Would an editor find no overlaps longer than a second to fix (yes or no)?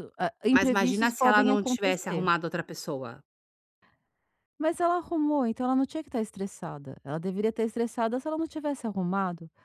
no